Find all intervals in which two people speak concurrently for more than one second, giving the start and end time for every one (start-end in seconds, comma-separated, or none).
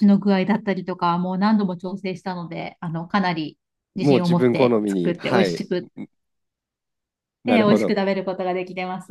4.0-5.6